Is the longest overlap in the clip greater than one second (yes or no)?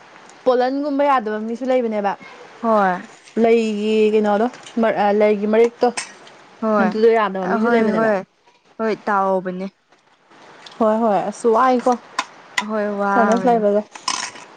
no